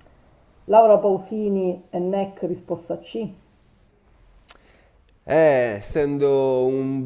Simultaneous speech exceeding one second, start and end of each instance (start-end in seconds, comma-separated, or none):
none